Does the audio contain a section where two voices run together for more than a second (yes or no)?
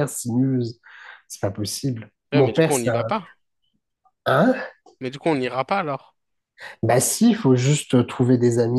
no